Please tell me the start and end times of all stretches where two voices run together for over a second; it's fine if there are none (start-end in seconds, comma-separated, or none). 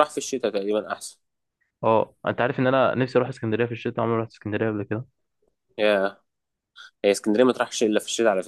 none